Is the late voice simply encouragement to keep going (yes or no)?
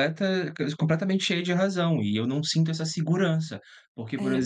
yes